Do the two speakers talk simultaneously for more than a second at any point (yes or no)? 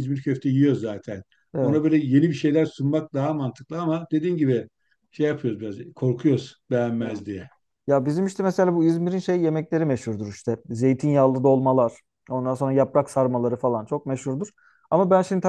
no